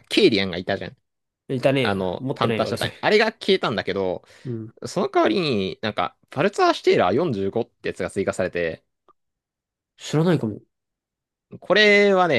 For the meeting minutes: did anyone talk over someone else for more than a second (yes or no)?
yes